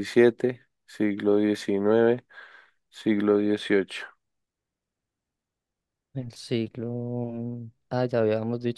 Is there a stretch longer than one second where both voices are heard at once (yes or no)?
no